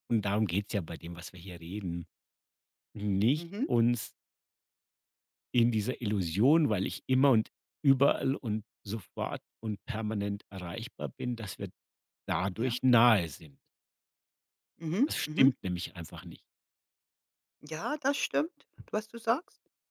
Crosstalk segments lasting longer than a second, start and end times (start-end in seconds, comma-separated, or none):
none